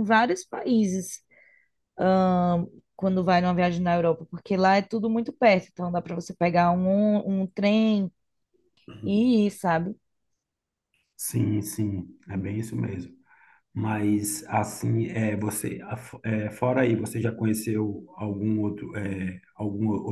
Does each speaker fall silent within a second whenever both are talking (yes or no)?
yes